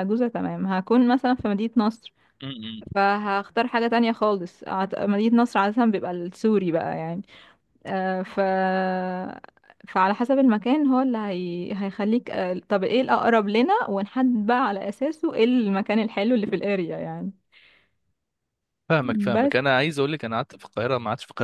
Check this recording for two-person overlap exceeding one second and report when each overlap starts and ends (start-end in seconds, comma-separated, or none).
none